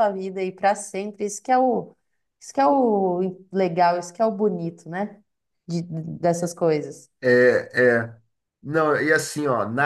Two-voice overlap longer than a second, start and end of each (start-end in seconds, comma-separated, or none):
none